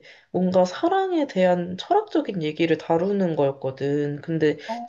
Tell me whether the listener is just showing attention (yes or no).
yes